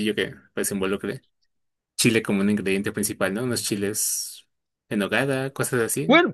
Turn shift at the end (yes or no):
yes